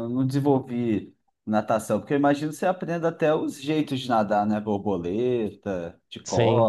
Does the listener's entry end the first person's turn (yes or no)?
yes